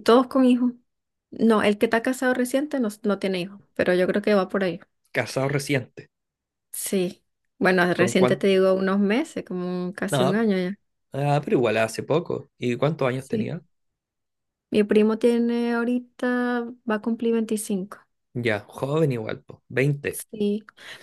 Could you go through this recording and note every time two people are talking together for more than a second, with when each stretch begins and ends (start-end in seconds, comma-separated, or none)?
none